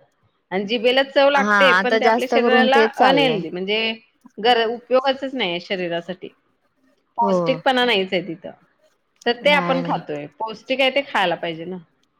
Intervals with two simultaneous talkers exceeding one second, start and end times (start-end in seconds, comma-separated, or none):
1.4-3.4